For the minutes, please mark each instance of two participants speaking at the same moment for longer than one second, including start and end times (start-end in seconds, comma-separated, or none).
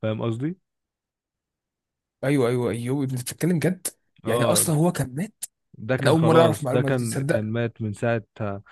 6.0-7.5